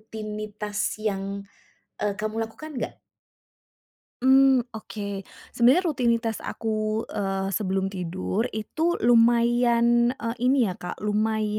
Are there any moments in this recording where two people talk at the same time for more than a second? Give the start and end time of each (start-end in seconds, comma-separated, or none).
none